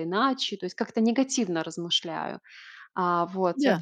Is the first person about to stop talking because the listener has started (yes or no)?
no